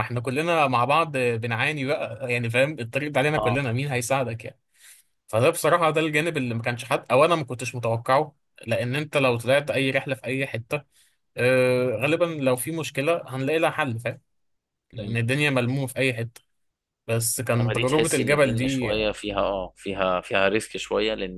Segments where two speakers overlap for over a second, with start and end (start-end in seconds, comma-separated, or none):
17.6-18.9